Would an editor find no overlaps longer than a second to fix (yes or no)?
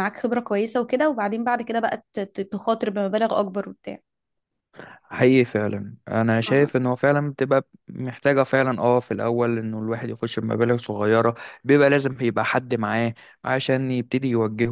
yes